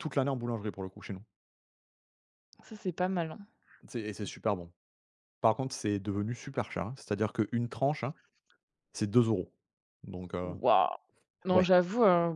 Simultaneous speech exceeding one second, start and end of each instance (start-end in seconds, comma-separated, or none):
none